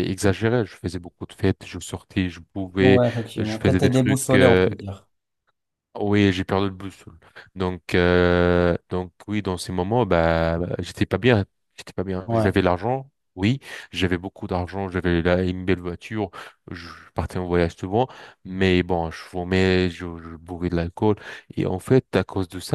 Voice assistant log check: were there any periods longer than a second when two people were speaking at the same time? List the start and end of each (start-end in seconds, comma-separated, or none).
2.8-4.7